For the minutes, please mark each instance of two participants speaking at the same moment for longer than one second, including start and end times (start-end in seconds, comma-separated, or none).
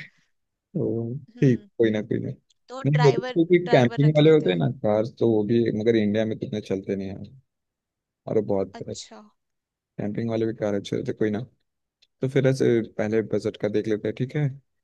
2.9-4.6